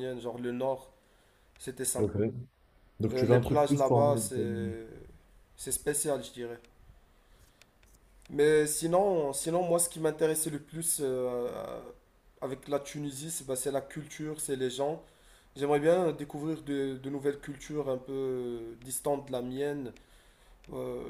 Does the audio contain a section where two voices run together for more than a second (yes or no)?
yes